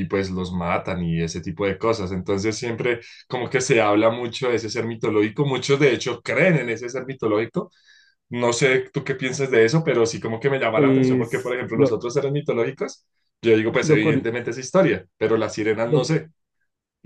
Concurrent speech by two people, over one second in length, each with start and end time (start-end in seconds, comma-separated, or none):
10.7-12.0